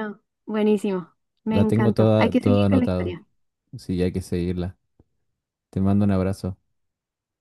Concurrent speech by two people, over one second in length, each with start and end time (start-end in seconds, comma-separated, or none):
1.5-3.2